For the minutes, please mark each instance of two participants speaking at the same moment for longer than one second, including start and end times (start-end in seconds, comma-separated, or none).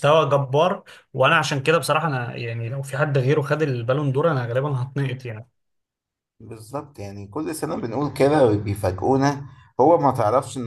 none